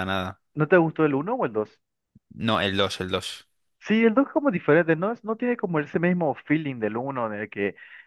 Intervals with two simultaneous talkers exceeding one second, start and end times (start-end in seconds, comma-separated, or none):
none